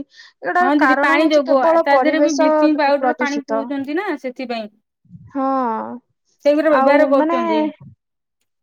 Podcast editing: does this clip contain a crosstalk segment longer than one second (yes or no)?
no